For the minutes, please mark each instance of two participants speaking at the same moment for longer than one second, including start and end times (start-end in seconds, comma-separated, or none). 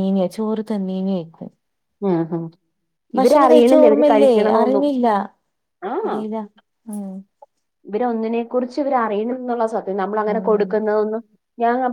3.2-4.9